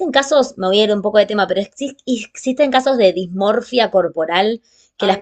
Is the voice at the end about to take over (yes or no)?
no